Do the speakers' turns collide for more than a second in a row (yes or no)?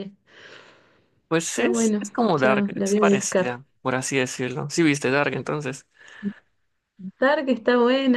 yes